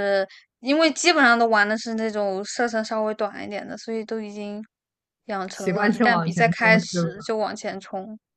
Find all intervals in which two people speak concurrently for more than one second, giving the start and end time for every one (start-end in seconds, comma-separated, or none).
5.5-7.2